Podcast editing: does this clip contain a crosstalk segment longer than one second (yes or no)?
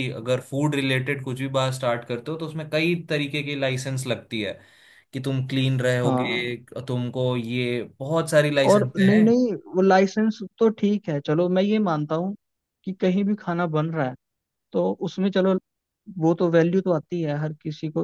no